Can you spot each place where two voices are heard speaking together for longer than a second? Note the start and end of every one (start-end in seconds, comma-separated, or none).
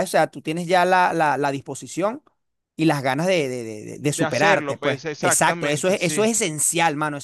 4.1-6.3